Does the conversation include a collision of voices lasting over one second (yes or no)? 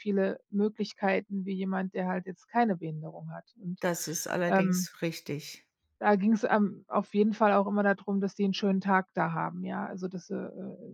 no